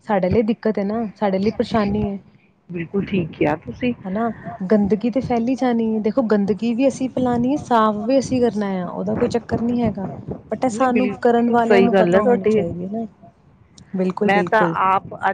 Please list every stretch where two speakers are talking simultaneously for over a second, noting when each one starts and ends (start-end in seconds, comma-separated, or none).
10.7-12.6